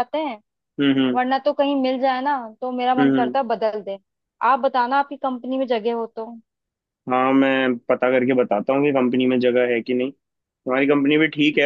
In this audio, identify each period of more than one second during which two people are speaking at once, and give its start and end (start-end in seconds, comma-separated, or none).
none